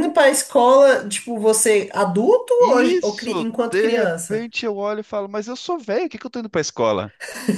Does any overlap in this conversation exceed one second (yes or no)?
yes